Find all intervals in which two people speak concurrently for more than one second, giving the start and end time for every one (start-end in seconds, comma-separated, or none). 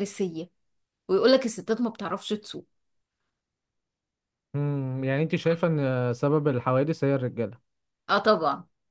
none